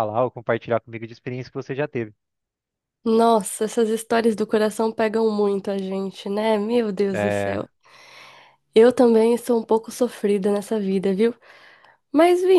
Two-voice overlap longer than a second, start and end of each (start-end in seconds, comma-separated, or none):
none